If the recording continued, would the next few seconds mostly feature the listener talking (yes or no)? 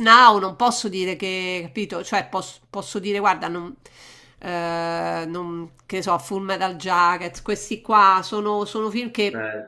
no